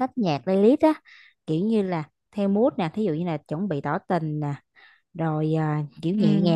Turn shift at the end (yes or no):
no